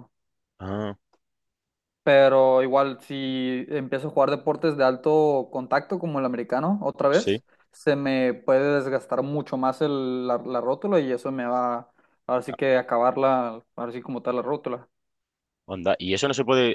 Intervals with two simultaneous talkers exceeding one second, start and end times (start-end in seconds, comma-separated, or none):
none